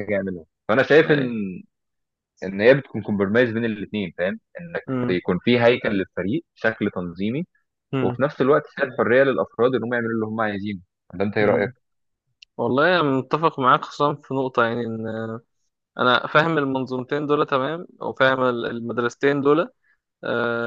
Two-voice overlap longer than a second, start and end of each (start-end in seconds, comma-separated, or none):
none